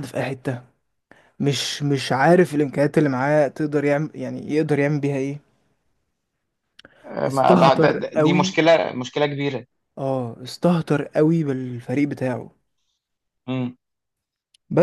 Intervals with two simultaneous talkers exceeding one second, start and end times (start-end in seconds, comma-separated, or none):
7.3-8.6